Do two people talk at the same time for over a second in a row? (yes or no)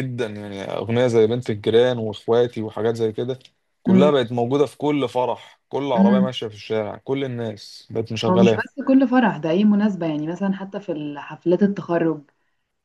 no